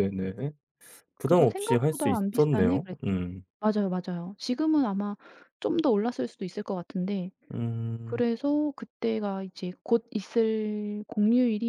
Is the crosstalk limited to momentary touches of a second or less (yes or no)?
no